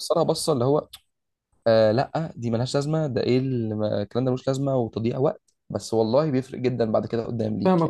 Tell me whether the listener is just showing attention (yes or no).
no